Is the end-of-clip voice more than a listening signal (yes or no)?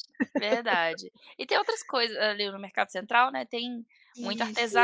no